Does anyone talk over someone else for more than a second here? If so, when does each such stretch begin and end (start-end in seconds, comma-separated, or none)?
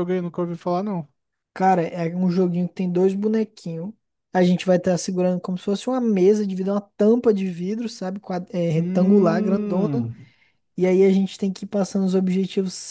8.8-10.1